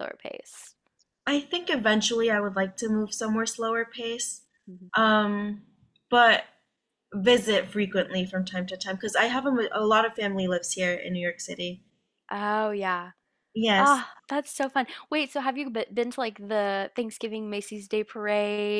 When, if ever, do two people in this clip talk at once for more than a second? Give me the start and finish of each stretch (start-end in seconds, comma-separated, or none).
none